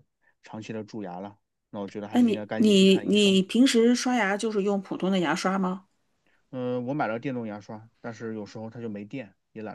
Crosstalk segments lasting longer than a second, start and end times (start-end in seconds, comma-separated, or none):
2.1-3.4